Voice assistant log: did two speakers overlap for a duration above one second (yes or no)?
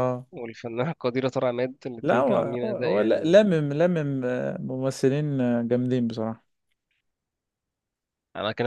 yes